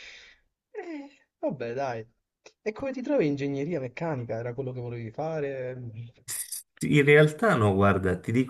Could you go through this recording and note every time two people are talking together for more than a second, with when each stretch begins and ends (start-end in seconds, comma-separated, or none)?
none